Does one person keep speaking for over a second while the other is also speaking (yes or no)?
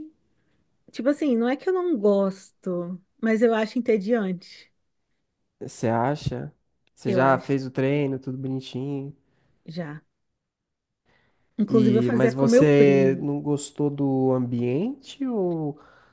yes